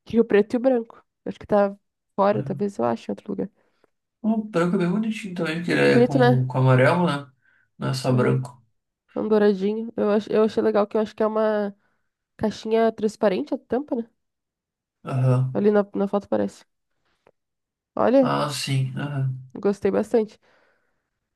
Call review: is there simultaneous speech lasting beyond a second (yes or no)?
no